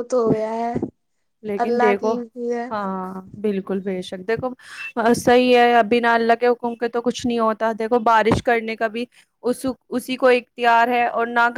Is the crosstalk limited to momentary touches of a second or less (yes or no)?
yes